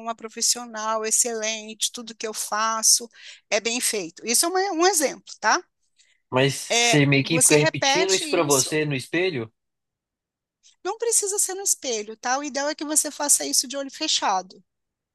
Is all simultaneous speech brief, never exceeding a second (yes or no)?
no